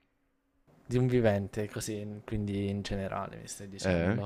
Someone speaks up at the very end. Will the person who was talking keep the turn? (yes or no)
no